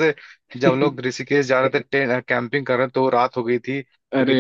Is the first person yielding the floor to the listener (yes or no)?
yes